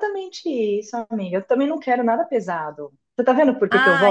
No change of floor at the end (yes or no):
no